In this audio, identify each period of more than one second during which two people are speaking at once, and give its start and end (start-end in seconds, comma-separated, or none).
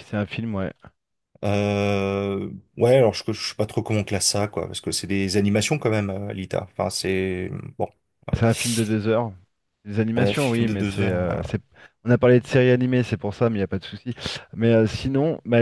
10.2-11.5